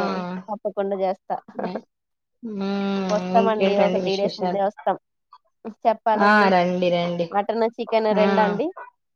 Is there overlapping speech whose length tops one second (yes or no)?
yes